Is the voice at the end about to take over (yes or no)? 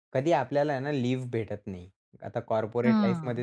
no